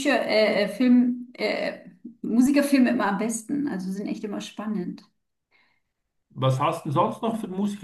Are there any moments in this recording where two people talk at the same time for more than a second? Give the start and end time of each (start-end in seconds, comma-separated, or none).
none